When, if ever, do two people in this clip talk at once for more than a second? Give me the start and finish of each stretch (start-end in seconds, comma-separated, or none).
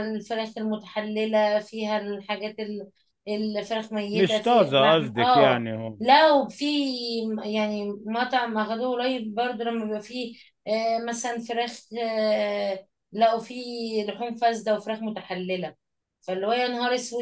4.1-6.0